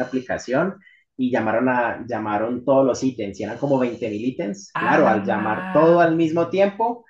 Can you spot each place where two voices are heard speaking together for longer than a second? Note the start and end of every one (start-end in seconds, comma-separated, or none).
4.7-6.2